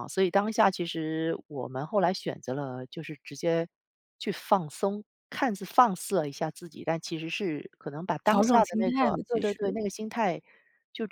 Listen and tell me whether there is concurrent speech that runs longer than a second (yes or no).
yes